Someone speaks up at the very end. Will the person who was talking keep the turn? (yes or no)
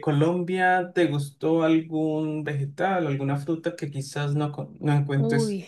no